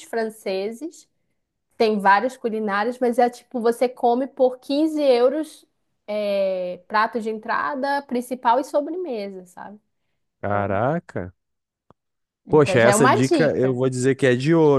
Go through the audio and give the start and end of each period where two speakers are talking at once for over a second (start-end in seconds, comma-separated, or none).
12.5-13.8